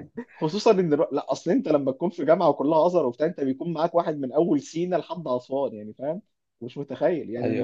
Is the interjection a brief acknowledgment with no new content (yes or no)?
yes